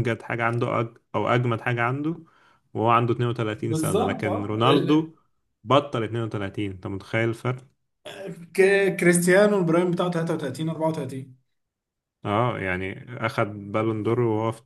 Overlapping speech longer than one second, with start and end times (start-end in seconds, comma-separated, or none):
3.6-5.1